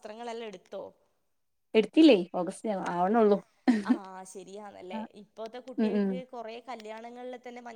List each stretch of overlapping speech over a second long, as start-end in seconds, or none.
none